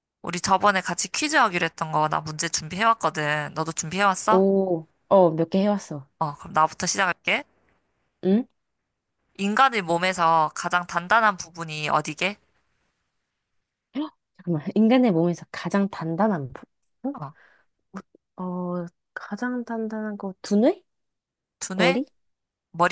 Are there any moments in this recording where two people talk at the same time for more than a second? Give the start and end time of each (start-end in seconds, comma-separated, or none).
none